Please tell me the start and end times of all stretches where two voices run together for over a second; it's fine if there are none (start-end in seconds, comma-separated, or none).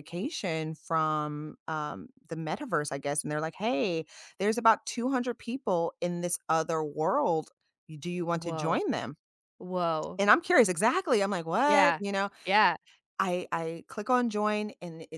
none